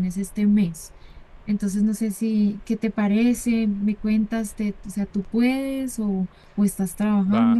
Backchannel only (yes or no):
no